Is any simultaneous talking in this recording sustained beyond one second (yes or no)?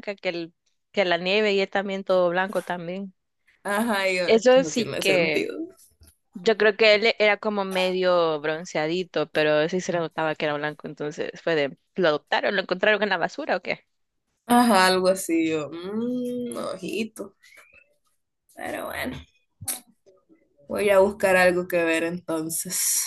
yes